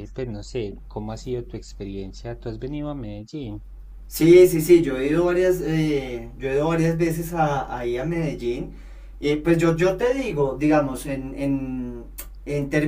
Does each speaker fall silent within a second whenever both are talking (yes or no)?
yes